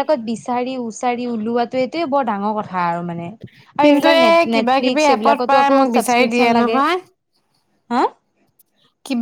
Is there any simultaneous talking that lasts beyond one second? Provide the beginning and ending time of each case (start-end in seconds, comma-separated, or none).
3.8-6.8